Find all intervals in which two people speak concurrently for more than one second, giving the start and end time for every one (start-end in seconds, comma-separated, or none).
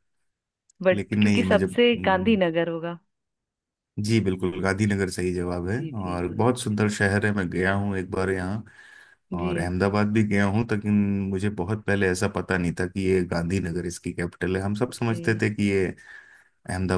0.9-2.4